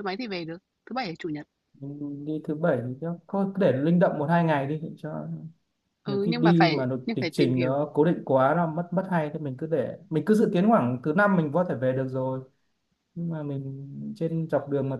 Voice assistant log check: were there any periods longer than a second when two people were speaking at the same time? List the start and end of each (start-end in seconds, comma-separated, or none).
6.0-8.0